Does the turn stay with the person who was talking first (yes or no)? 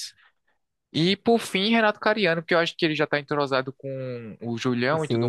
no